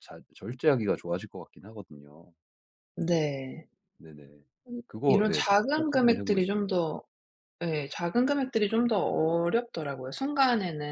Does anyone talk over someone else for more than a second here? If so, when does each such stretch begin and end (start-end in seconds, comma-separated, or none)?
4.9-6.8